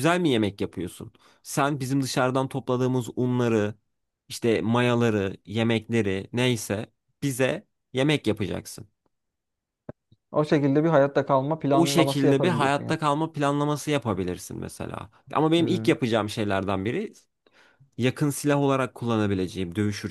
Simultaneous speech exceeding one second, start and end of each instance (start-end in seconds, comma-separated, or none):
11.7-13.0